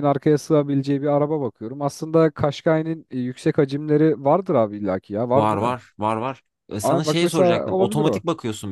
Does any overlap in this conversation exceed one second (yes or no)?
yes